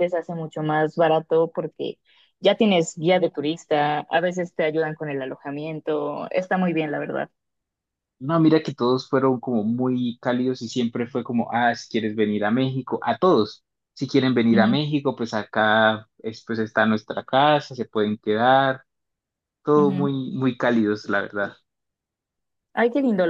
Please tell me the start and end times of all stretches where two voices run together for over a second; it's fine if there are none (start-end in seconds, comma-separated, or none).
none